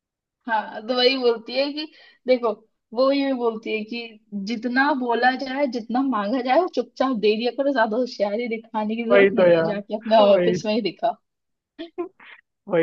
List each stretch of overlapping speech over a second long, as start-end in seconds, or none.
9.1-10.6